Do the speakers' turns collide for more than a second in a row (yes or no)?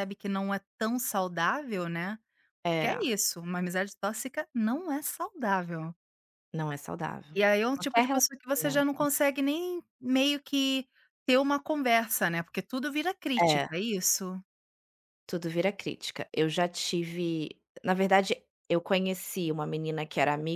yes